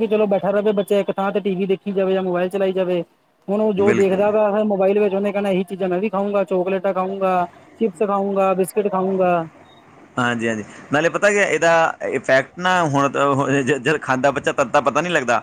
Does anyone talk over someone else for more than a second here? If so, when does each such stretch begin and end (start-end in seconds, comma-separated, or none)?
none